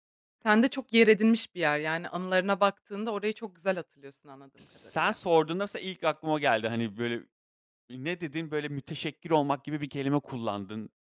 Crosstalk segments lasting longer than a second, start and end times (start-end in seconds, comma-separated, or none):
none